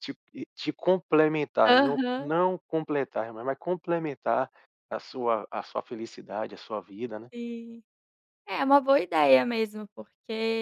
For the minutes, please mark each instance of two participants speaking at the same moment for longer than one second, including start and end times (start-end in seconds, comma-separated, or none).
none